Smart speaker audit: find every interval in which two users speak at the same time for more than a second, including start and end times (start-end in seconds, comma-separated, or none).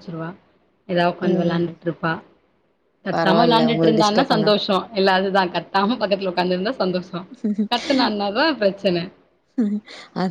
3.2-4.5